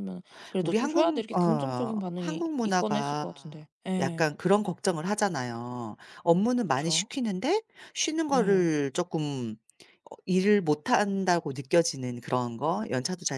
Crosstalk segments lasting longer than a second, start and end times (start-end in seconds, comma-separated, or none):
0.6-4.3